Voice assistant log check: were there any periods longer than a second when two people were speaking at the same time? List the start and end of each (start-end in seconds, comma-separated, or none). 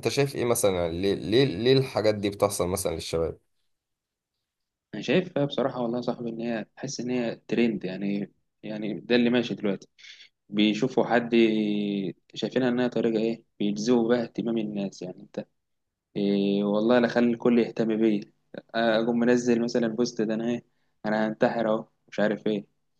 none